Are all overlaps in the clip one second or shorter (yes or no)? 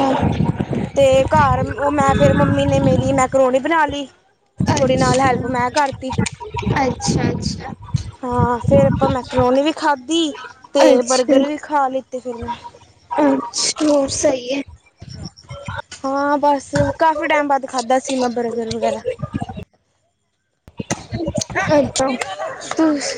yes